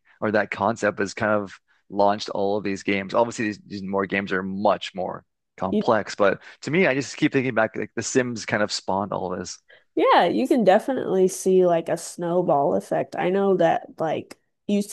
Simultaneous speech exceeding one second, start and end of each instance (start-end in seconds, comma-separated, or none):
none